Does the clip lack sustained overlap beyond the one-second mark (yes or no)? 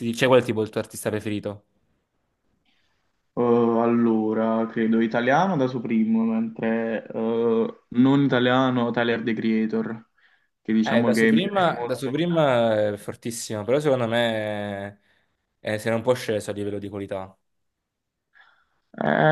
no